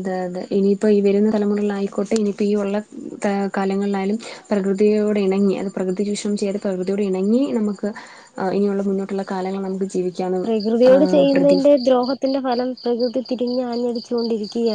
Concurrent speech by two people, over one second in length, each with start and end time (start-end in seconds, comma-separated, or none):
none